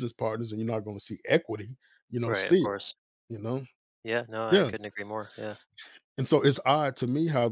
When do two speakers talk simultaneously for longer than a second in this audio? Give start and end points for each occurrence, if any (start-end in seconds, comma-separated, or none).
none